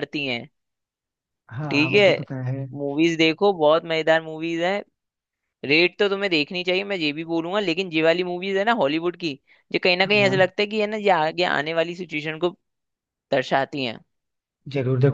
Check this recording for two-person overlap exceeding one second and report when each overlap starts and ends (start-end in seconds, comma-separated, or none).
none